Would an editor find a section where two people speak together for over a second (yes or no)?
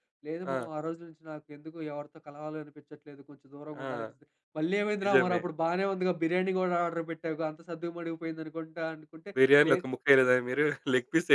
no